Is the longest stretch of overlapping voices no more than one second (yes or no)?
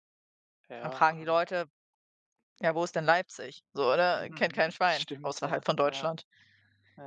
no